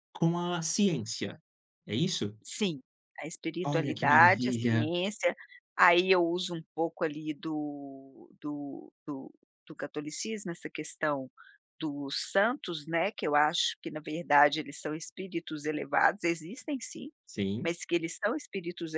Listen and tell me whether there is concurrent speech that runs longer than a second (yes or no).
yes